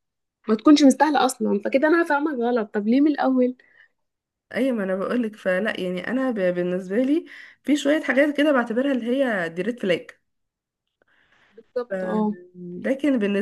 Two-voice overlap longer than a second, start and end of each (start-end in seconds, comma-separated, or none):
none